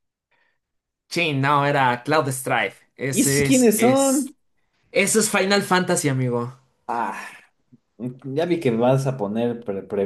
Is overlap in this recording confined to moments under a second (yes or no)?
no